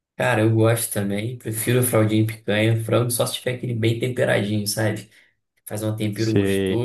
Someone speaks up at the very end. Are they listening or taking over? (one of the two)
listening